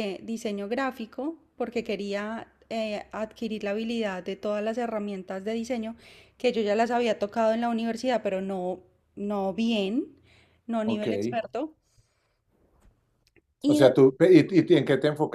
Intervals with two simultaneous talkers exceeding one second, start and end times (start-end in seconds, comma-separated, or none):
none